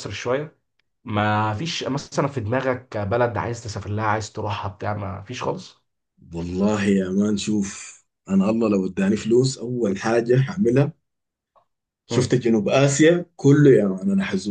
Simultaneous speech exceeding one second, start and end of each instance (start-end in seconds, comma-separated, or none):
none